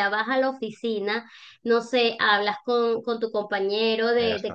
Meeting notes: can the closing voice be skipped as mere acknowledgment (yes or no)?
yes